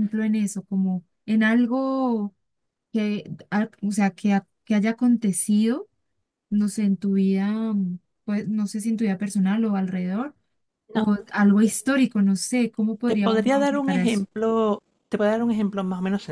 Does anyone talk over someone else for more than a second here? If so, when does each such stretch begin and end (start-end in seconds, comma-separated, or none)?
13.0-14.3